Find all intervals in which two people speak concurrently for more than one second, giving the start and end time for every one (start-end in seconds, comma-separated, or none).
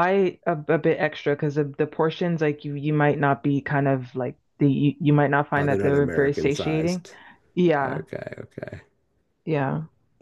5.6-7.0